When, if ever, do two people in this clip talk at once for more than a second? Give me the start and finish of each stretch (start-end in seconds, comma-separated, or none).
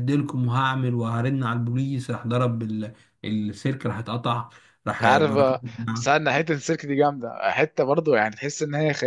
none